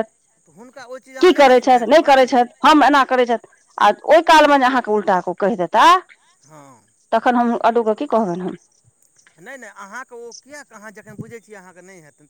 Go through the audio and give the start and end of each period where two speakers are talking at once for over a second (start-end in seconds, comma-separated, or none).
0.6-2.4